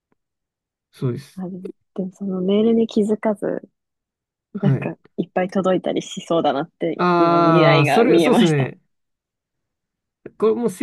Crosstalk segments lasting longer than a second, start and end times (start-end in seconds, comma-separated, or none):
7.0-8.7